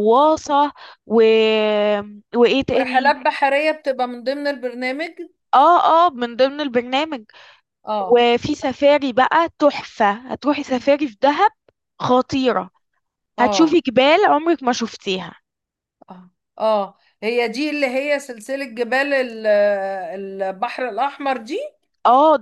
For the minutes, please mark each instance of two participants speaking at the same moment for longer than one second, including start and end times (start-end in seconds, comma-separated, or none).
none